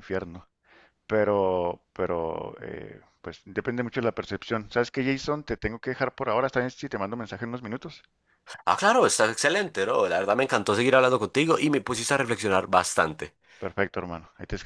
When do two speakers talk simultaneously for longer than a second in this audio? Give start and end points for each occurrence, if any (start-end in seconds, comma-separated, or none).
none